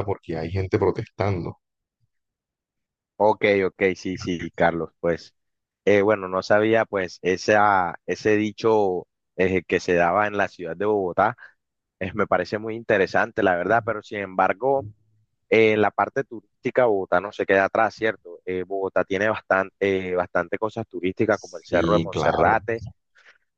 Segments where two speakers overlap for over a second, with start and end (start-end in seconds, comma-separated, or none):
21.3-22.6